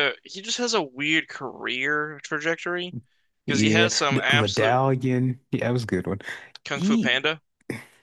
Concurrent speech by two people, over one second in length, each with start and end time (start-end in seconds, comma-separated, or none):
3.5-4.8